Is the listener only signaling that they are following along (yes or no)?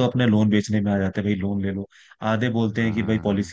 yes